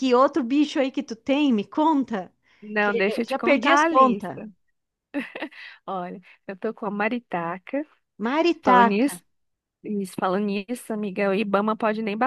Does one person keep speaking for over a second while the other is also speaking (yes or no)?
yes